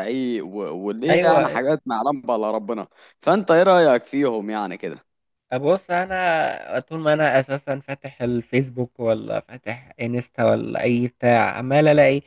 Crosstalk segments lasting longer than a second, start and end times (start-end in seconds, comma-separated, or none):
none